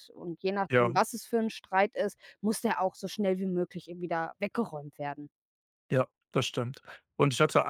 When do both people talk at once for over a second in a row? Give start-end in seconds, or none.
none